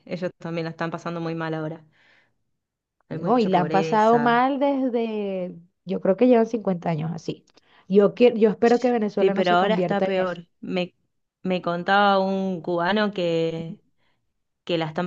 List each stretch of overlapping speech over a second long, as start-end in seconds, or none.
3.1-4.4, 9.2-10.4